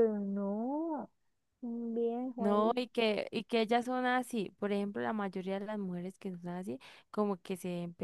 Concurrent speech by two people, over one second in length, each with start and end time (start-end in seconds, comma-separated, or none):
none